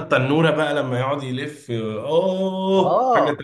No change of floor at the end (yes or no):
no